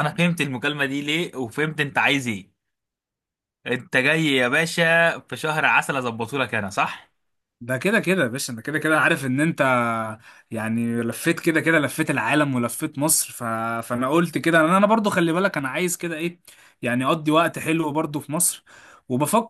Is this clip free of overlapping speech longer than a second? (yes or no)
yes